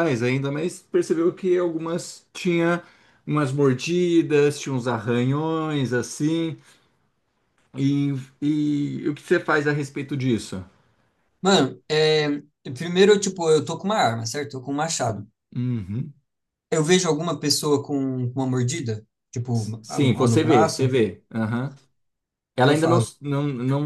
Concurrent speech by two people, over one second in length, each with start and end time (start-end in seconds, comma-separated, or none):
19.5-20.9